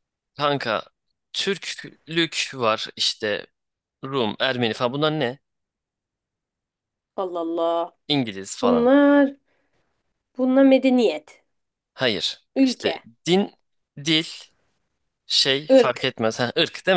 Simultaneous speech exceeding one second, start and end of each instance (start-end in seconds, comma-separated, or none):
none